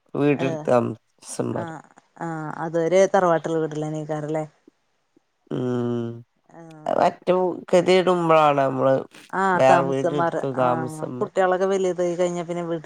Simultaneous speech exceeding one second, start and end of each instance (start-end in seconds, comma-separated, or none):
9.6-11.3